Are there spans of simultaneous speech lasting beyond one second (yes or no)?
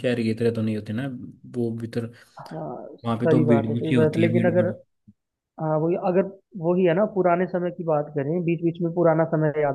yes